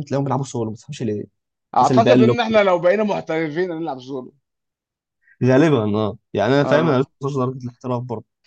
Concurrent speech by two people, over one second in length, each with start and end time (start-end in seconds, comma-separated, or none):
none